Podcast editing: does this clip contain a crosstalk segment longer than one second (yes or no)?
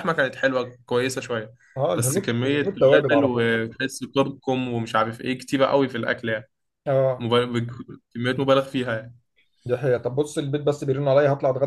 yes